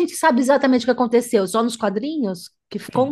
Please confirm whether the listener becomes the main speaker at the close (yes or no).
yes